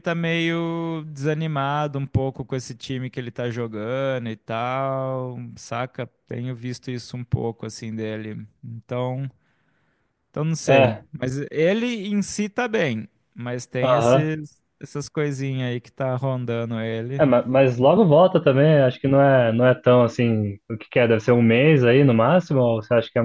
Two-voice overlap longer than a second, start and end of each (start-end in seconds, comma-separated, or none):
none